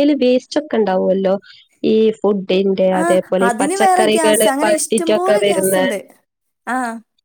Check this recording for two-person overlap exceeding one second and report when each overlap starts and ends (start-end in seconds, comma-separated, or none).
3.0-5.8